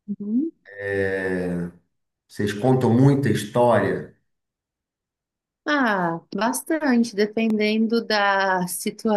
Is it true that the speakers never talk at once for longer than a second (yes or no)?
yes